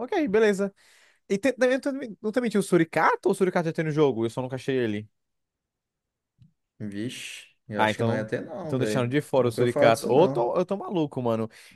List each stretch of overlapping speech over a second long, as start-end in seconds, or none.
7.8-10.5